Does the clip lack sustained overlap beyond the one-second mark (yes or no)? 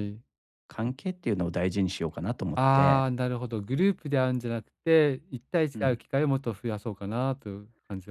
yes